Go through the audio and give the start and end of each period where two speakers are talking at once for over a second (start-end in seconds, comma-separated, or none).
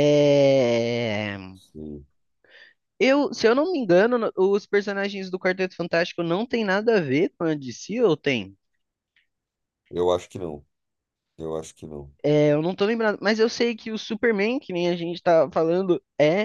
none